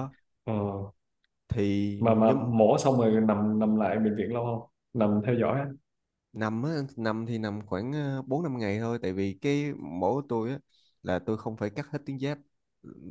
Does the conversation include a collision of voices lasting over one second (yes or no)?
no